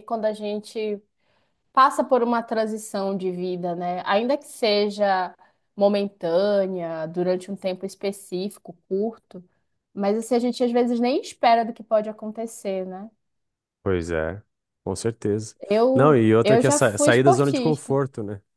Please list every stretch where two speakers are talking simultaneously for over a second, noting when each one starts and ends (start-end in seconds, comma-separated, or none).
15.9-18.0